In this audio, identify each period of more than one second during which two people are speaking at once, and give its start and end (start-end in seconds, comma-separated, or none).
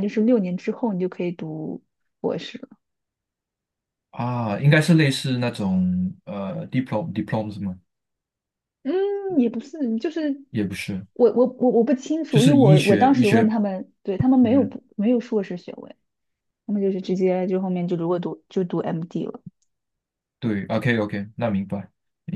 12.3-13.5